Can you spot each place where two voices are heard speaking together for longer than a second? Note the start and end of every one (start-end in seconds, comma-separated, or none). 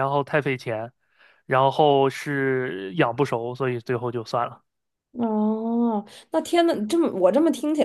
none